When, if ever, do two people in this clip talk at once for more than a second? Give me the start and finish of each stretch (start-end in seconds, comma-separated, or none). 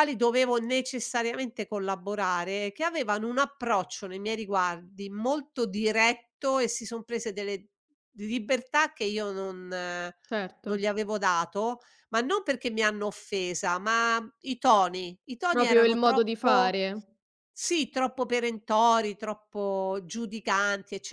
15.5-16.8